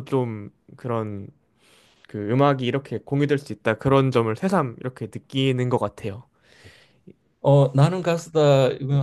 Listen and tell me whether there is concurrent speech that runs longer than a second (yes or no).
no